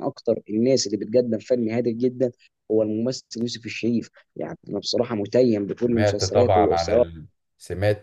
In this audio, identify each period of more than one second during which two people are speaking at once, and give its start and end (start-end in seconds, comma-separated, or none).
5.8-7.1